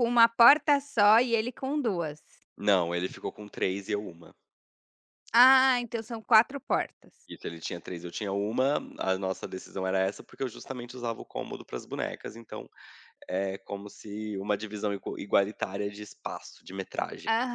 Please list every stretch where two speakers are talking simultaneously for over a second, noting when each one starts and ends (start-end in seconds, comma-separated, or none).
none